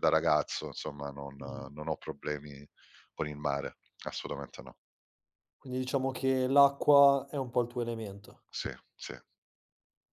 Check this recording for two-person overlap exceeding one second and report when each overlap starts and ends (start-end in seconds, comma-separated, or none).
none